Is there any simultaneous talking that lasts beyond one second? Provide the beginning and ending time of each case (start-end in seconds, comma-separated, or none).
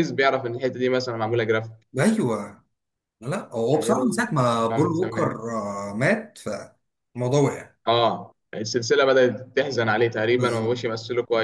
3.7-5.3